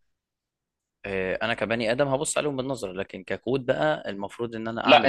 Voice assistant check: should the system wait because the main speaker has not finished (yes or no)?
yes